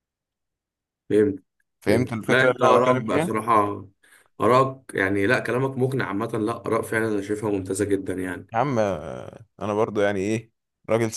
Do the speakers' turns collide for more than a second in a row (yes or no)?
yes